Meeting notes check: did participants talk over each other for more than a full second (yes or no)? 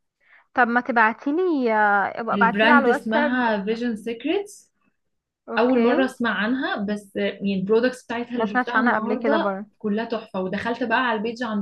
yes